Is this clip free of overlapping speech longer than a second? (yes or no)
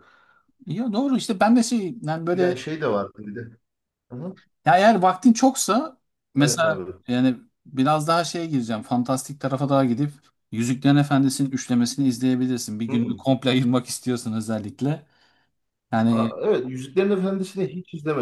yes